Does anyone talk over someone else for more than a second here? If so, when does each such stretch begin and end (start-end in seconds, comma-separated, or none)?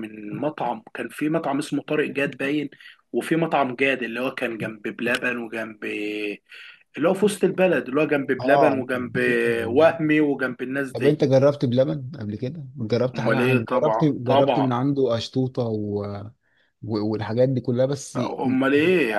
13.1-14.7